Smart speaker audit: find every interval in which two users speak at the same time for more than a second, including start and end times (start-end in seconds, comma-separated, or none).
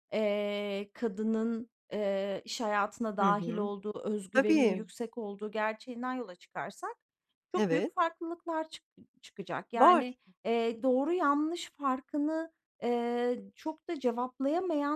none